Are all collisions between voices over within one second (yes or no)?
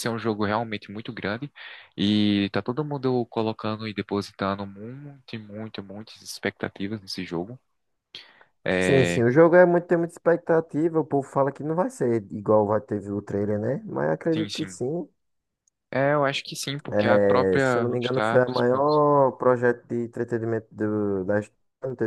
no